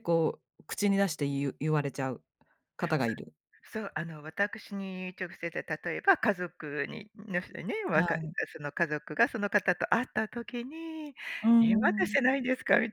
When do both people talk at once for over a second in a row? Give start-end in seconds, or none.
none